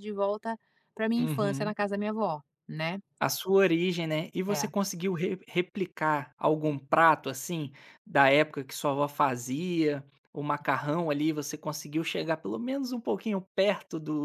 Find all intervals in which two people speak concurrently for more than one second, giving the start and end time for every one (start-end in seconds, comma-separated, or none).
none